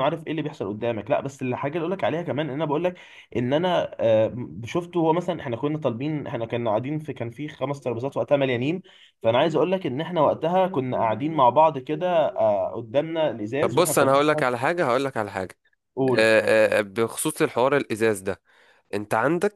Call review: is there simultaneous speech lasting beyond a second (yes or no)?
no